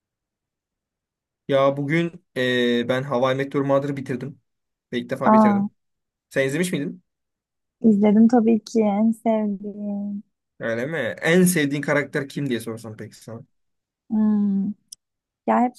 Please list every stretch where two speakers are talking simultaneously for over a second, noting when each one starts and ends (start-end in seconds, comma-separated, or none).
none